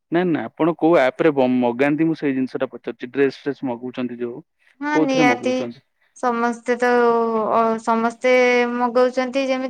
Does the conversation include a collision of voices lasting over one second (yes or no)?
no